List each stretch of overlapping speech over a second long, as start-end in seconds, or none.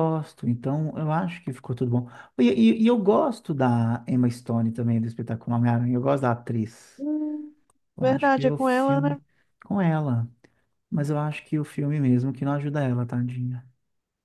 8.0-9.2